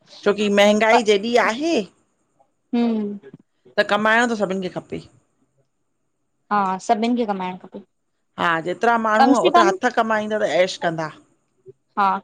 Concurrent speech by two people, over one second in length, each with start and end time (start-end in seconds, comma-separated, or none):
none